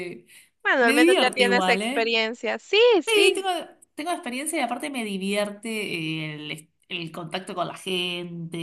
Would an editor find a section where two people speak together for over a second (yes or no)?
yes